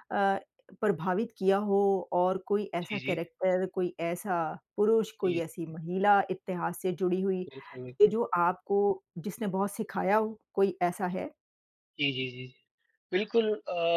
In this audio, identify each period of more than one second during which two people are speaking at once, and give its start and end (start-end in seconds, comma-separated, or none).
none